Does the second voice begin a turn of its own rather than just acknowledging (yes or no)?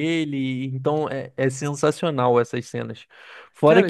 yes